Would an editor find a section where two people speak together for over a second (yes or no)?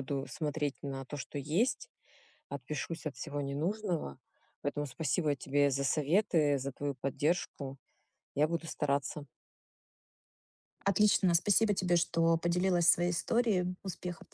no